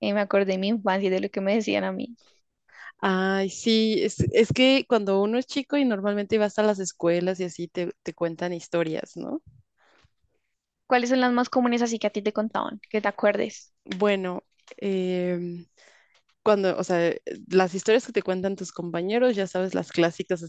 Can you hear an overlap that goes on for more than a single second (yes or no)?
no